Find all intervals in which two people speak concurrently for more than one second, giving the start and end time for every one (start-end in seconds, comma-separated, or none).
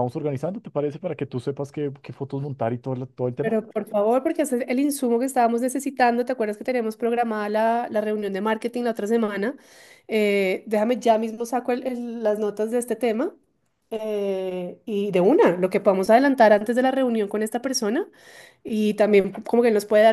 none